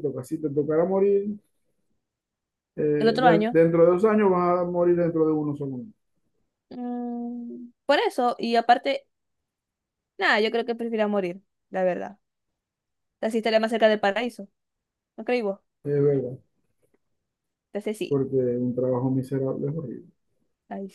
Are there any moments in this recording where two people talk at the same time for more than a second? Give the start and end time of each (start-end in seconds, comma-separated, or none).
none